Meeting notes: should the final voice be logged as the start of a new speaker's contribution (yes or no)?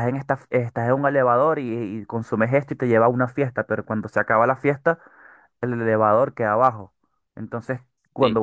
yes